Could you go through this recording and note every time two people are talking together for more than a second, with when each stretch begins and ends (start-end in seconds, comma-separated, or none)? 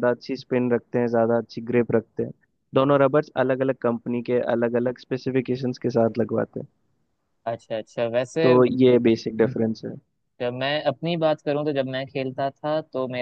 none